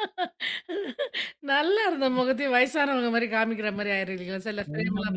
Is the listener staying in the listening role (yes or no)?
no